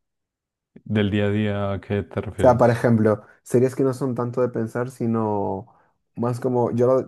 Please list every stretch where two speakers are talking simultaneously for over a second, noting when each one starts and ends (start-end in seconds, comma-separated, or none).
none